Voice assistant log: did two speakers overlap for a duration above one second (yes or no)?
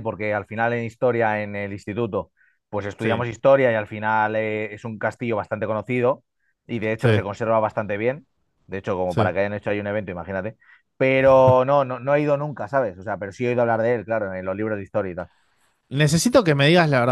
no